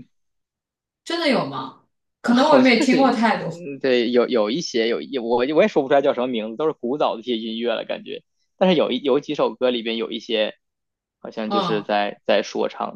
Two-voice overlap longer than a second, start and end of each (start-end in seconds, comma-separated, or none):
2.2-3.5